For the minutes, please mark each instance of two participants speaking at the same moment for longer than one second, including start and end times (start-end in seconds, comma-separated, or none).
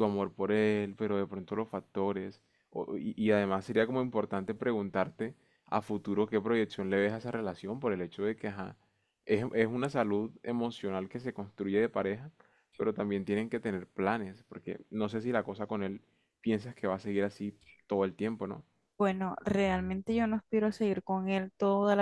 none